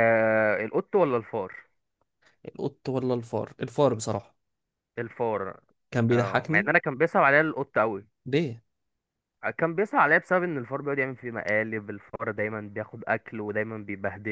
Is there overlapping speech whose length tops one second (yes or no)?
no